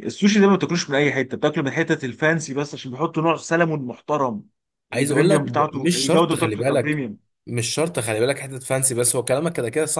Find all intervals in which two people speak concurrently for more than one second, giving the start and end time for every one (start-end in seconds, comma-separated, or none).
4.9-6.8